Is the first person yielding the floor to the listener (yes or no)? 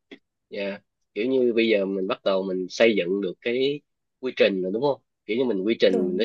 no